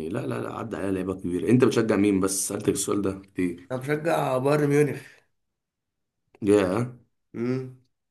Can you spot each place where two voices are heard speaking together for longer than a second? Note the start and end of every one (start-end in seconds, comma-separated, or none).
none